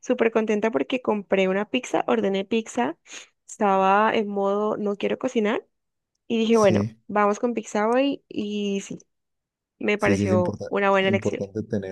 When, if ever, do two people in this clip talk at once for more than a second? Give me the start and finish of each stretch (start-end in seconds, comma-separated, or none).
10.0-11.4